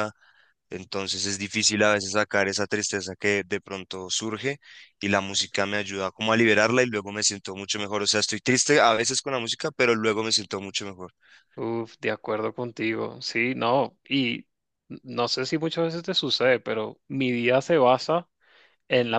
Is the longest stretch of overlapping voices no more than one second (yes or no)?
yes